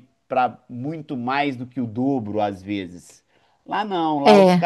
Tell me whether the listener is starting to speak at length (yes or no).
no